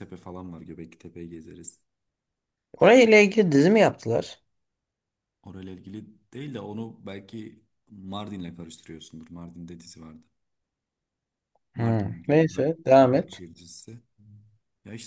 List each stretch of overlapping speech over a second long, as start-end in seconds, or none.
11.7-13.4